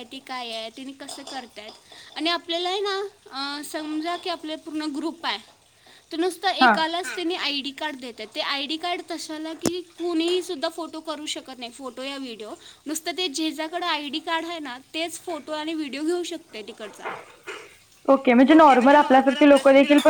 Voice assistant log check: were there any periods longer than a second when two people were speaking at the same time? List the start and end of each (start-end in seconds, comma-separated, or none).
none